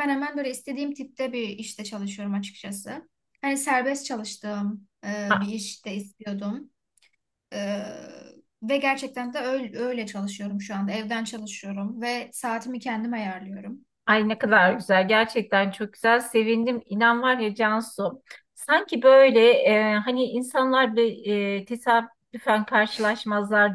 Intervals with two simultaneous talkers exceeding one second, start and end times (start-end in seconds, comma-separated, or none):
none